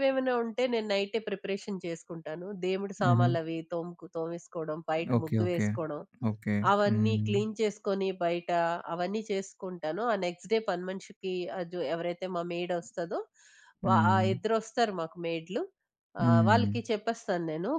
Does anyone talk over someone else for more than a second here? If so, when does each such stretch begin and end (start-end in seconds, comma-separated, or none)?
none